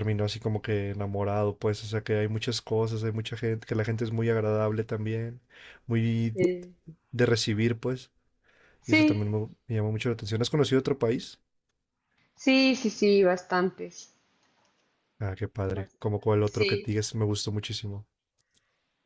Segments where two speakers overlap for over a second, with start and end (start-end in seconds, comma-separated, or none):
15.7-17.0